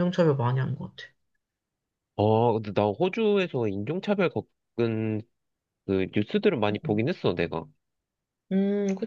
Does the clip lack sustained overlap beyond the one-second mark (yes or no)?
yes